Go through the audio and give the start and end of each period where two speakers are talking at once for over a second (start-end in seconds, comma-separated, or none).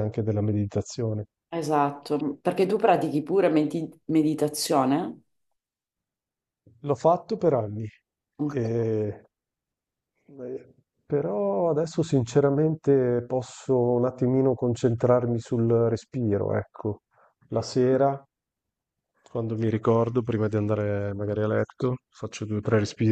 none